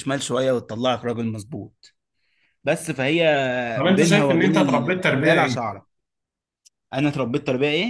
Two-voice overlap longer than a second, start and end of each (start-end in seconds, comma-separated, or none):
4.0-5.6